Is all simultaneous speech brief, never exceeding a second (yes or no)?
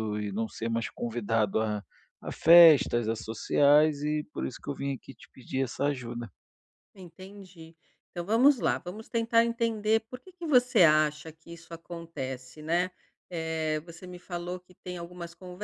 yes